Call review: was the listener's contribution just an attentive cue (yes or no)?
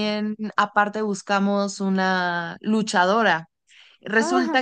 yes